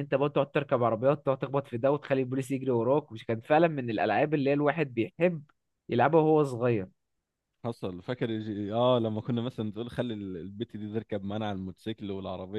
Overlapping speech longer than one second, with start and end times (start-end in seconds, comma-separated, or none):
none